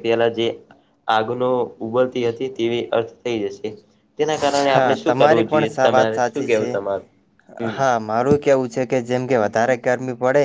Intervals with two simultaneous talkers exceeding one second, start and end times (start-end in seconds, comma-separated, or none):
4.7-6.8